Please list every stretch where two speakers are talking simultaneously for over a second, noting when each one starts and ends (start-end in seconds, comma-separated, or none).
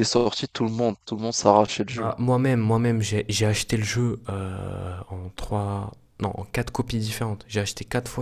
none